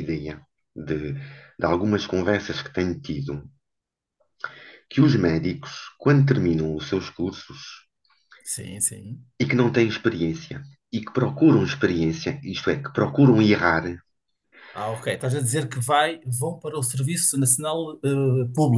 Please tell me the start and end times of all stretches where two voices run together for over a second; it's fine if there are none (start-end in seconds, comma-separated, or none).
none